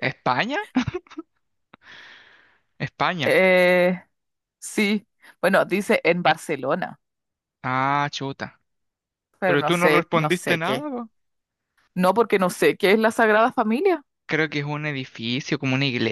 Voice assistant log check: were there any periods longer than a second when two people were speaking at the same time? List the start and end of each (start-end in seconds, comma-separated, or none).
9.4-10.8